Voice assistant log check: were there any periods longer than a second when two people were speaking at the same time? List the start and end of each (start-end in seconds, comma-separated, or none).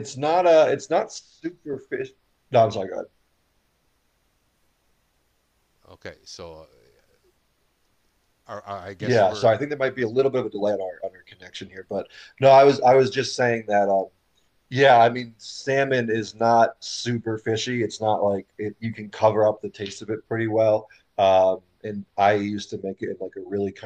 none